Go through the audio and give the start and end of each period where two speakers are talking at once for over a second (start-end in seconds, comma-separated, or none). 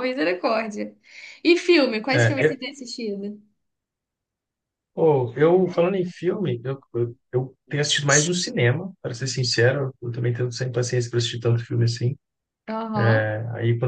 none